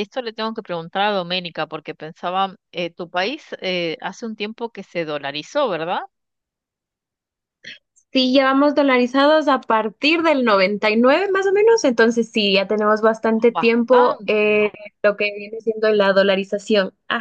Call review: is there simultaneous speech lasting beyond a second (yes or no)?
yes